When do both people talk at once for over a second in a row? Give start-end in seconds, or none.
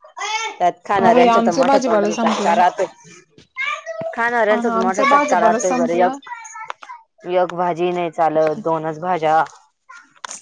1.0-2.6, 4.5-6.2